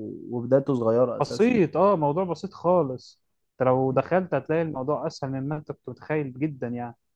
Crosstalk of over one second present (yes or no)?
no